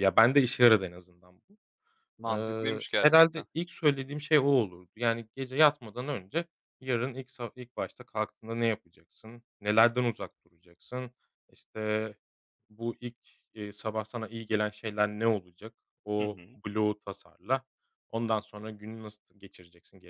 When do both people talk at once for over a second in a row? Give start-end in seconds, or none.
2.3-3.5